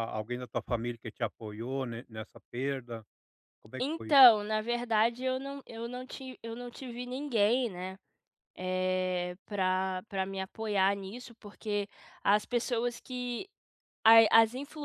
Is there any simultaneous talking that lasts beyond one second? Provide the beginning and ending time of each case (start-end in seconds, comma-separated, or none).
none